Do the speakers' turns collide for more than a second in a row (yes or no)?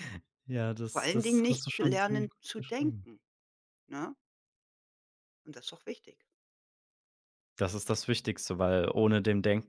yes